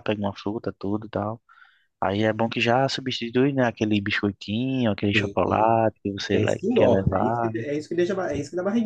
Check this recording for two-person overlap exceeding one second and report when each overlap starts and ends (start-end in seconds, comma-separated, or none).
6.3-7.5